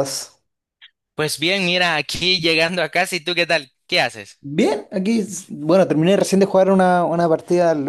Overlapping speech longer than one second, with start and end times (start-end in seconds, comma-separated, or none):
none